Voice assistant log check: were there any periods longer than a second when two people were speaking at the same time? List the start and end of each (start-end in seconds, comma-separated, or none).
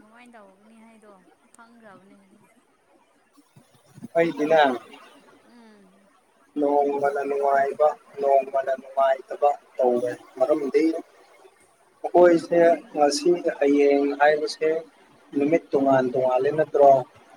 none